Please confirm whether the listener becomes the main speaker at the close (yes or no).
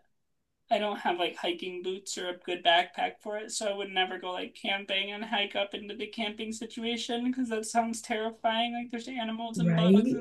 yes